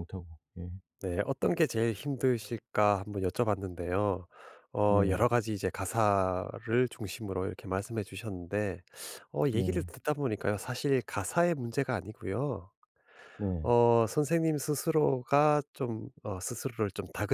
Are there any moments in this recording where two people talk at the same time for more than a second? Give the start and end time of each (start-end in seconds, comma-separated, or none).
none